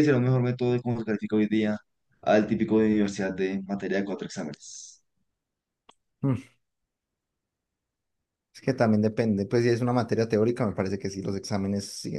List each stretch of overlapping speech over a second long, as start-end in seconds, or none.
none